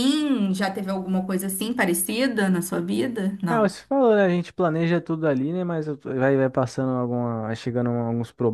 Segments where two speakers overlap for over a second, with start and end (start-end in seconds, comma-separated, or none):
none